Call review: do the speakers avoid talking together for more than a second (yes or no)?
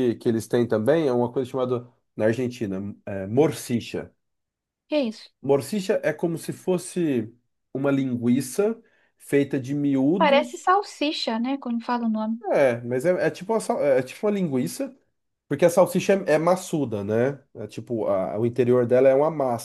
yes